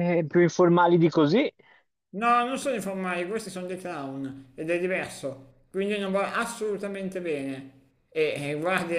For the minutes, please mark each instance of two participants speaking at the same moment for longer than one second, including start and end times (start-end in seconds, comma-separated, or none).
none